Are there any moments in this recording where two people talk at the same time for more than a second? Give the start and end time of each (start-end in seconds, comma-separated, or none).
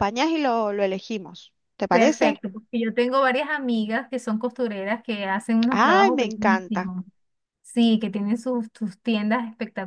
5.7-6.9